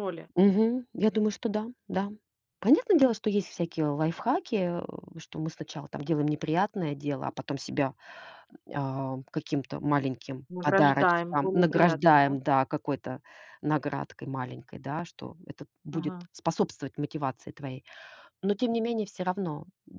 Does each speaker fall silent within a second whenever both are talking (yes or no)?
no